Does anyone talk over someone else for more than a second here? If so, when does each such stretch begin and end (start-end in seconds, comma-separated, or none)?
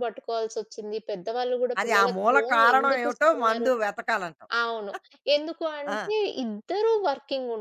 1.8-3.7